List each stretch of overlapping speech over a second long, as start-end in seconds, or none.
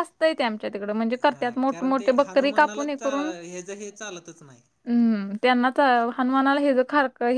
1.3-3.3